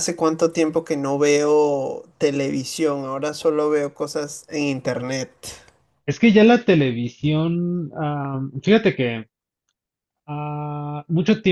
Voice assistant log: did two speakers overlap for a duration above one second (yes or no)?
no